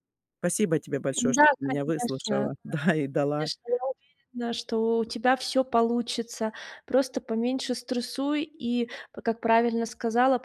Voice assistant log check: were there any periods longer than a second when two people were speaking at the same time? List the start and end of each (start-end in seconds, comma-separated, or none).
1.2-2.5